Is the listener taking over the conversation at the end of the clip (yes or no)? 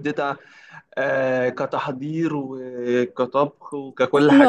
yes